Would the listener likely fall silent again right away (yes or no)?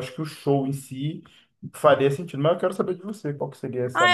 no